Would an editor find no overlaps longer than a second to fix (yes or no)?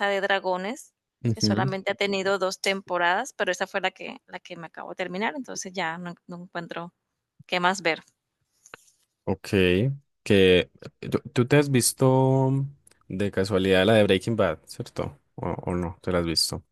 yes